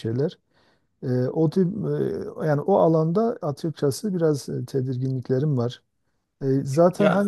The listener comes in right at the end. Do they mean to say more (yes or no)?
no